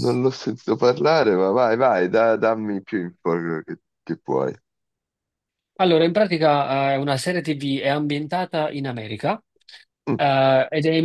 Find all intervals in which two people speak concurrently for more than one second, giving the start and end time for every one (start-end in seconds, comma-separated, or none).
none